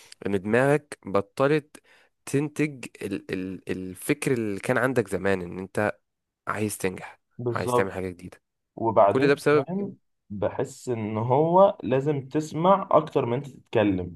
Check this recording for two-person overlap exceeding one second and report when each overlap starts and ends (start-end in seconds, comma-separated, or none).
none